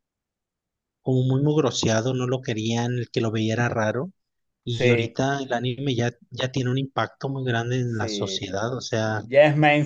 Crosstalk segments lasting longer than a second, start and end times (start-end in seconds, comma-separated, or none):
none